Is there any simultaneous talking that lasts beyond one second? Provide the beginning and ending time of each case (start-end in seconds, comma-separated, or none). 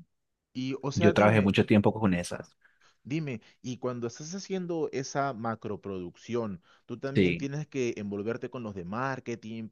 none